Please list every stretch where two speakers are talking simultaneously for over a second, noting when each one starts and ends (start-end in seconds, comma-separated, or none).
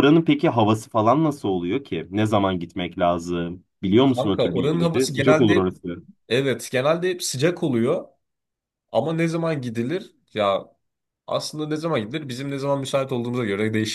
4.0-5.7